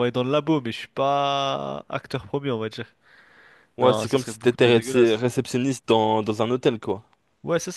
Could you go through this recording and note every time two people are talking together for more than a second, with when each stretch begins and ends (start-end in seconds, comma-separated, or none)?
3.8-5.2